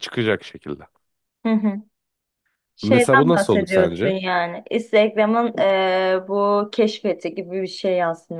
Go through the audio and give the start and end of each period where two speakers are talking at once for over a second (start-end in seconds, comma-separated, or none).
2.8-4.1